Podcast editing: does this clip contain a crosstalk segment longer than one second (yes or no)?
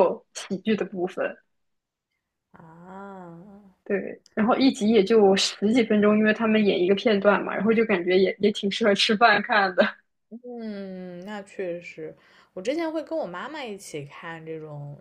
no